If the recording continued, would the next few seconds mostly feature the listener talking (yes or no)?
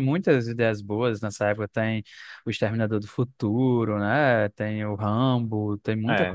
yes